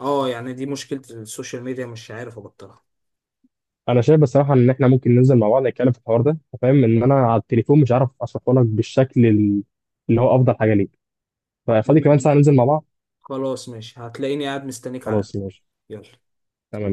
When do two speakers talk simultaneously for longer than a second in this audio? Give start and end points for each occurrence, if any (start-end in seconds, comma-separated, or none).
none